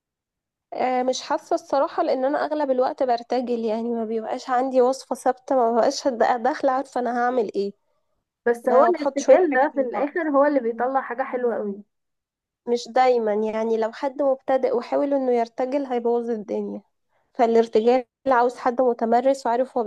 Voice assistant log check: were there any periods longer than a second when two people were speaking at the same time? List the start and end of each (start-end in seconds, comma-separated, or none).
8.7-10.1